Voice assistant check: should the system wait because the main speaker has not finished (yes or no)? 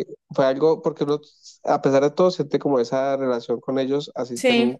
yes